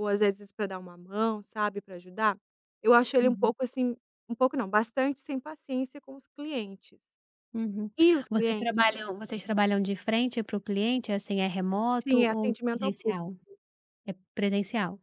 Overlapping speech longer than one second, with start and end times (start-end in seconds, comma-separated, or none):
11.9-13.2